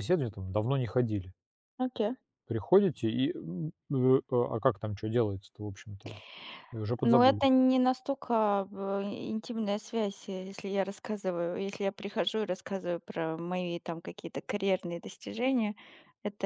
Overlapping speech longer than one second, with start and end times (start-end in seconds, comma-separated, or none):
none